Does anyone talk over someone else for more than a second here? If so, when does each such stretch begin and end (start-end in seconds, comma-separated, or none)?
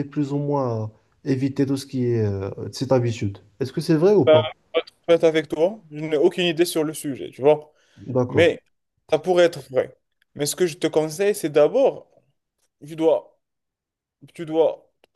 none